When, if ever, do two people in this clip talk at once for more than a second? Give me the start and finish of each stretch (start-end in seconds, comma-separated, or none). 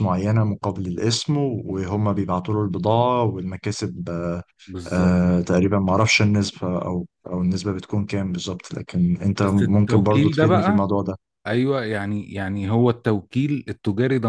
9.4-10.9